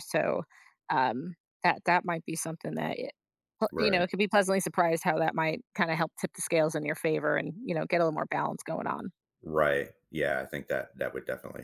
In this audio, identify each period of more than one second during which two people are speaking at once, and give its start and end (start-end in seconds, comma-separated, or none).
none